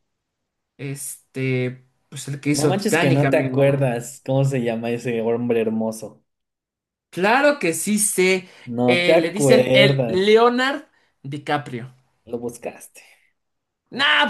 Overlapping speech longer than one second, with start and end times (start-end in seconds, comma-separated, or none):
2.6-3.9, 8.9-10.3